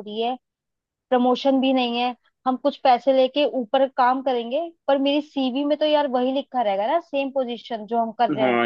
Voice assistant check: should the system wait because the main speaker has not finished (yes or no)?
no